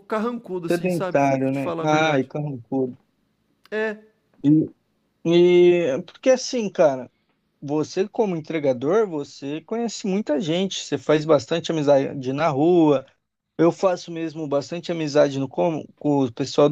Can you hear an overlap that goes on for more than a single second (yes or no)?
yes